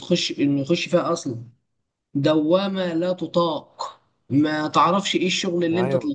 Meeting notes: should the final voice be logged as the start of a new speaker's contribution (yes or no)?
no